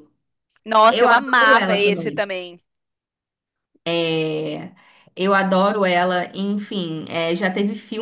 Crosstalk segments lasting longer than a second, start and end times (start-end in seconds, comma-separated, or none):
0.9-2.2